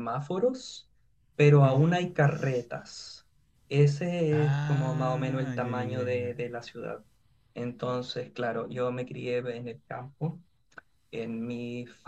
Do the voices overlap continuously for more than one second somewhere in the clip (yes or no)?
yes